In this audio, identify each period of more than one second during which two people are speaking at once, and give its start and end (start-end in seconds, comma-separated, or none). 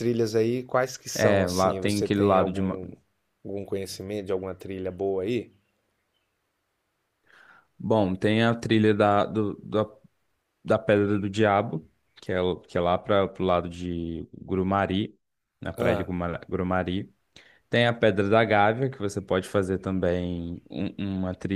1.1-2.8